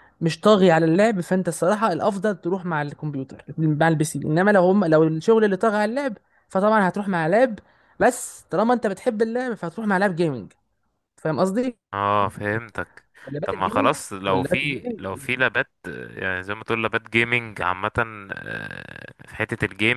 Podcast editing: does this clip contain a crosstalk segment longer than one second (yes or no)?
yes